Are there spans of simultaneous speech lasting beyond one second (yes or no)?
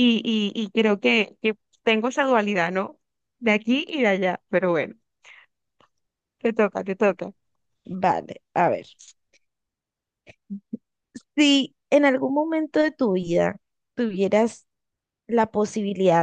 no